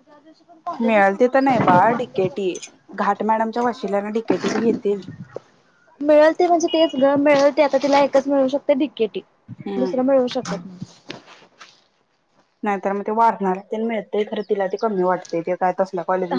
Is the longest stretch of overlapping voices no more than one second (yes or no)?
no